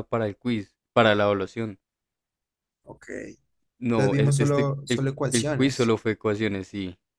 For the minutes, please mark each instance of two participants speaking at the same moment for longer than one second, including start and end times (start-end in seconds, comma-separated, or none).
3.9-5.9